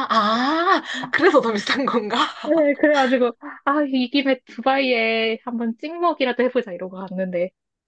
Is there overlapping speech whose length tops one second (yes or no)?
no